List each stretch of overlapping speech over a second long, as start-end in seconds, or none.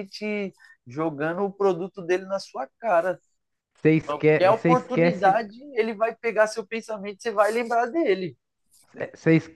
4.0-5.5